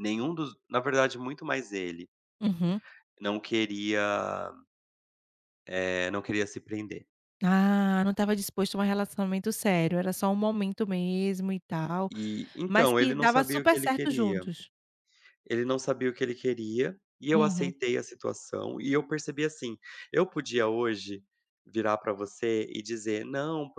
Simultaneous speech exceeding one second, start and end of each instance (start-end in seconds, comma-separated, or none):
12.7-14.4